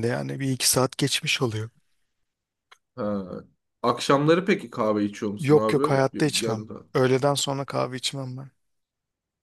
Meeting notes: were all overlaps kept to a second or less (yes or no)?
yes